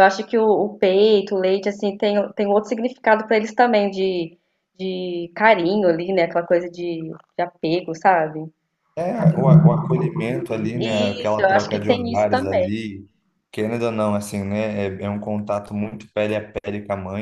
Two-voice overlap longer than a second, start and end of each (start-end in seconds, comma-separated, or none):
11.2-12.7